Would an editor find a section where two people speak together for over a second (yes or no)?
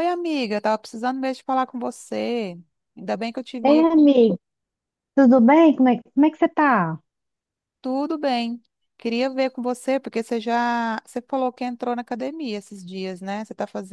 no